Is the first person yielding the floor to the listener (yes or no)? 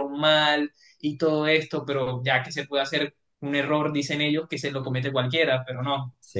no